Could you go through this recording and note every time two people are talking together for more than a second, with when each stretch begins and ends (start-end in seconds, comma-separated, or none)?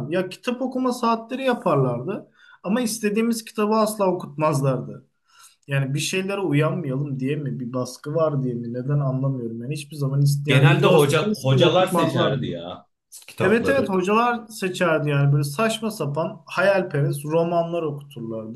10.5-12.6